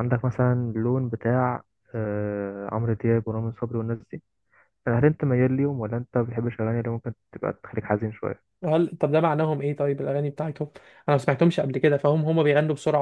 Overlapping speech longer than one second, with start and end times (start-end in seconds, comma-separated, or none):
none